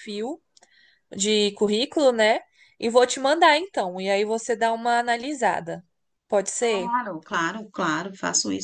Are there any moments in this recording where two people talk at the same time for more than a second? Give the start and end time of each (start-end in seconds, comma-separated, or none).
none